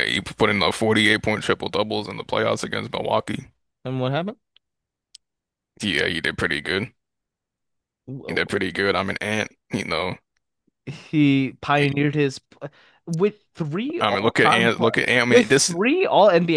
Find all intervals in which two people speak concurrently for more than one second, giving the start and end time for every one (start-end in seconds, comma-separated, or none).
14.0-15.7